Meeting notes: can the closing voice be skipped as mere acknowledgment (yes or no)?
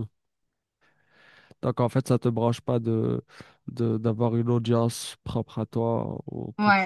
no